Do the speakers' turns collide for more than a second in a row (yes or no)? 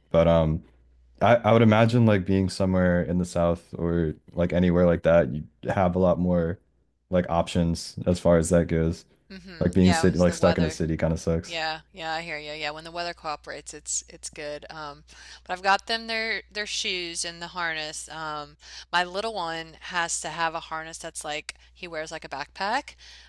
yes